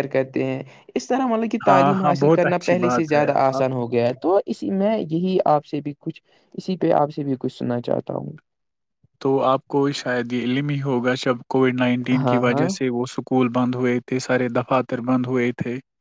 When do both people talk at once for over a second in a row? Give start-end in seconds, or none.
1.7-3.6